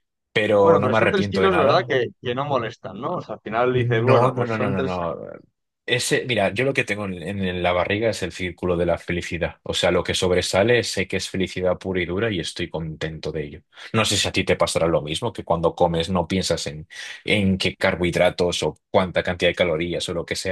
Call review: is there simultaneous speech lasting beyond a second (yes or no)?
yes